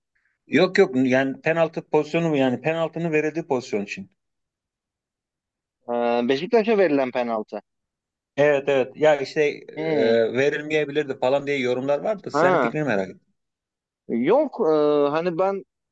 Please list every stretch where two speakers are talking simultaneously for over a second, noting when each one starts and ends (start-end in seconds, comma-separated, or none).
none